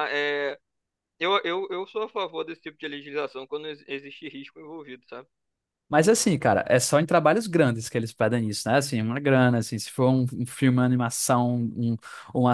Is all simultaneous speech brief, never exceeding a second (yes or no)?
yes